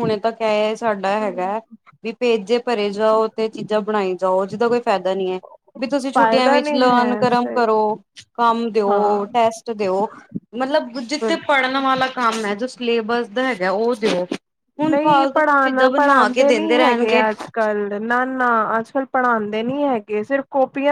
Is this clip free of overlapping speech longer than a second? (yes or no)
no